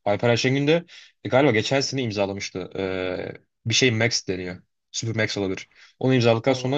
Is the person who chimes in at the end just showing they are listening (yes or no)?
yes